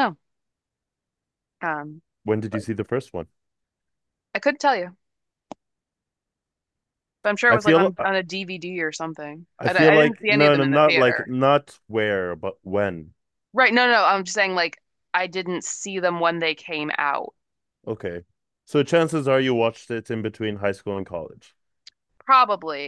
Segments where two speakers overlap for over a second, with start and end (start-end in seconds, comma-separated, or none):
9.6-11.3